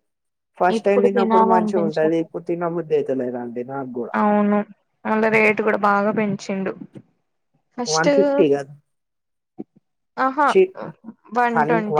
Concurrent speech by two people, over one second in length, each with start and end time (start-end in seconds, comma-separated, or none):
0.8-2.2